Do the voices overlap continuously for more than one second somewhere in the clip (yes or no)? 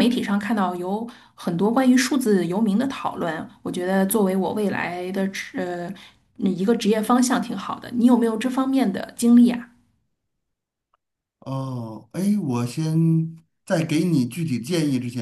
no